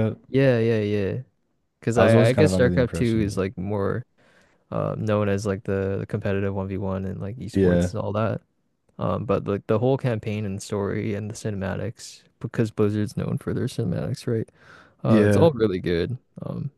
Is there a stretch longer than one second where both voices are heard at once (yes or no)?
yes